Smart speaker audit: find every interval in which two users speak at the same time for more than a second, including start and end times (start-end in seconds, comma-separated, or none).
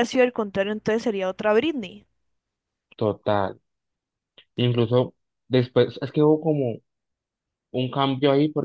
none